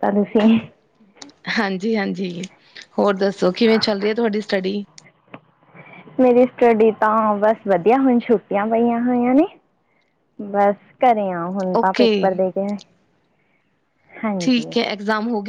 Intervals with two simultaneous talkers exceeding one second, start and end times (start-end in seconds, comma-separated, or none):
none